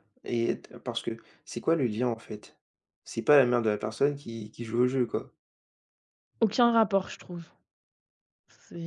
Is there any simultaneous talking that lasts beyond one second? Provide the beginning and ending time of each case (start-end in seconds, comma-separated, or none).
none